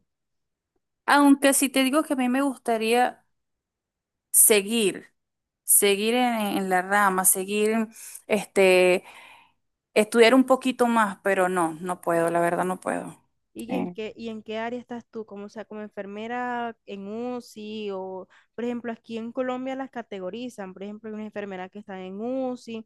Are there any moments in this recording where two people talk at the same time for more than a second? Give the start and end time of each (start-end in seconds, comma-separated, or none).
none